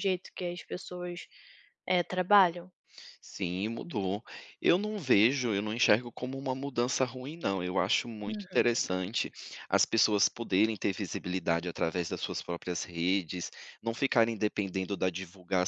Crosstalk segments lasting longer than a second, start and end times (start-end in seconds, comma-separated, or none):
none